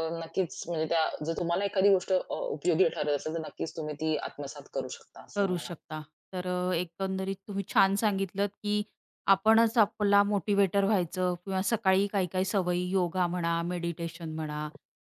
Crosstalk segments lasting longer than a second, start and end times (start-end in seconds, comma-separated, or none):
none